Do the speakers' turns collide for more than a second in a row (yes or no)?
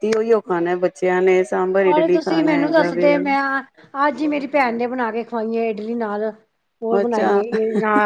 yes